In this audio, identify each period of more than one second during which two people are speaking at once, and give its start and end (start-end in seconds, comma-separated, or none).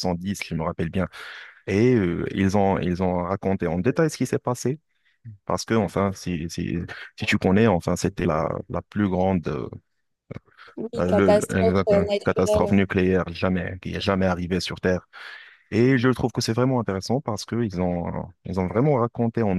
10.9-12.7